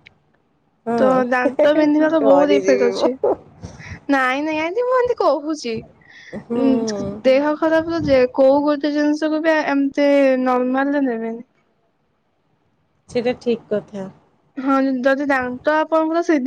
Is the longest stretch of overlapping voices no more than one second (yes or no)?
no